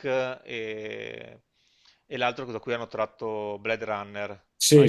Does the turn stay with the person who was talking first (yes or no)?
yes